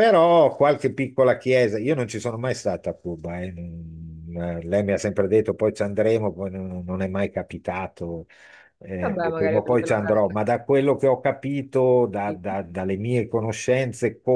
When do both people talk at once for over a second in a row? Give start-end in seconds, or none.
9.0-10.4